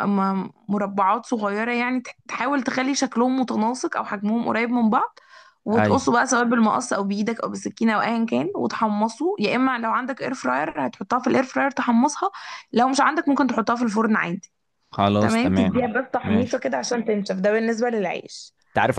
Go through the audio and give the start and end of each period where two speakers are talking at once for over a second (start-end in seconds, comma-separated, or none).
15.2-16.6